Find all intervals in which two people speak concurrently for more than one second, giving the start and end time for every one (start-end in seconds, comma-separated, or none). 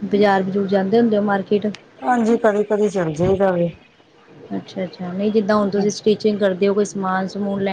none